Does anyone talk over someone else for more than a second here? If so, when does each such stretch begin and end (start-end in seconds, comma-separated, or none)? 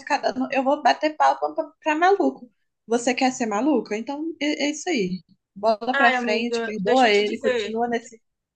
5.9-7.8